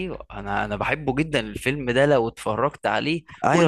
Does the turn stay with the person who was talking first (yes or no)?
no